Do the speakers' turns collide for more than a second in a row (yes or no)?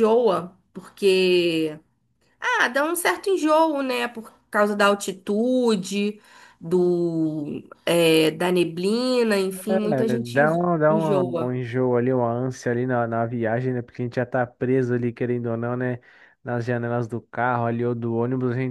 yes